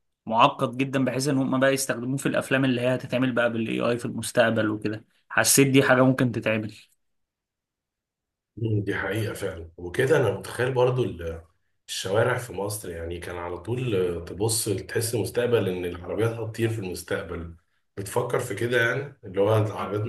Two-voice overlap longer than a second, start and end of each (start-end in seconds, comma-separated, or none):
none